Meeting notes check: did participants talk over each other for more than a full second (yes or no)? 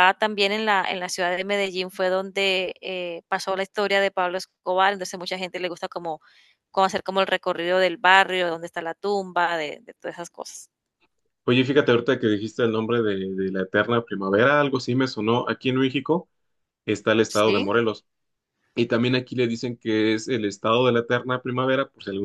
no